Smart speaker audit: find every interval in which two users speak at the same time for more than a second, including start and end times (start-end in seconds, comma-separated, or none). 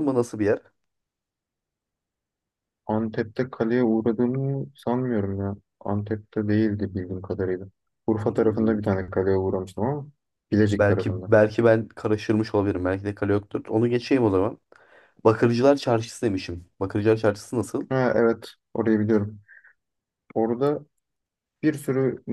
none